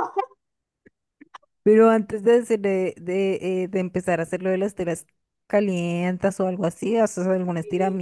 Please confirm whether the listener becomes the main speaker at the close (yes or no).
yes